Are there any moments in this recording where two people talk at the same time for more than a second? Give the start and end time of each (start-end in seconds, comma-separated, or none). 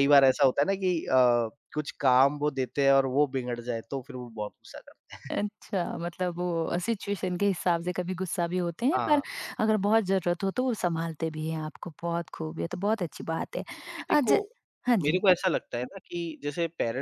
none